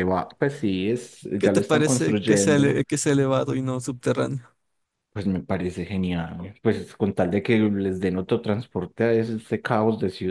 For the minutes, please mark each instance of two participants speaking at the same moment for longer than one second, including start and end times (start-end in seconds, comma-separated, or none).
1.4-2.8